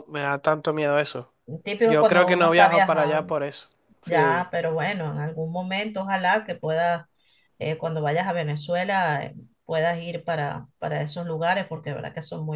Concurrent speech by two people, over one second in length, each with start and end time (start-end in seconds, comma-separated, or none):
1.8-3.3